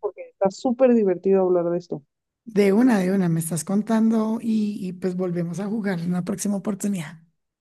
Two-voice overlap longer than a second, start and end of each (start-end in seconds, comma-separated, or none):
none